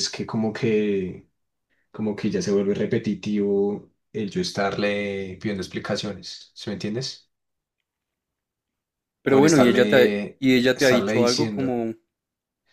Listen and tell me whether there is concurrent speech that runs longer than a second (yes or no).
yes